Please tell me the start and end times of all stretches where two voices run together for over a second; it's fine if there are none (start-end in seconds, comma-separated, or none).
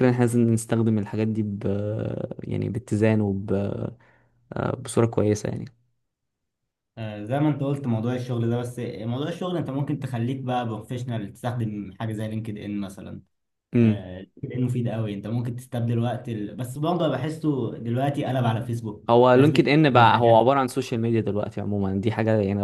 19.1-20.4